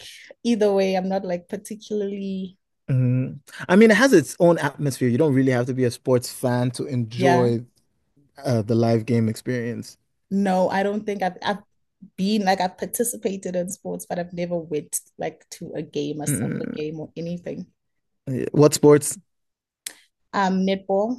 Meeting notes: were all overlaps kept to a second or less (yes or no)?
yes